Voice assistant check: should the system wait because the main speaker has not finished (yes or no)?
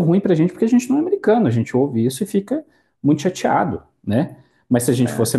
yes